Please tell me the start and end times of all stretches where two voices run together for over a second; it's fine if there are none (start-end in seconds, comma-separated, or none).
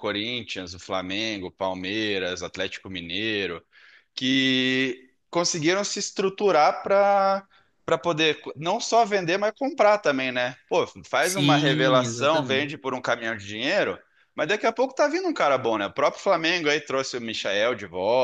11.2-12.7